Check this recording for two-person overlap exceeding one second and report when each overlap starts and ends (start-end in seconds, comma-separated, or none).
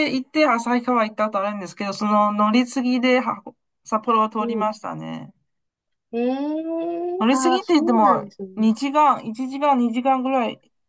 7.3-8.7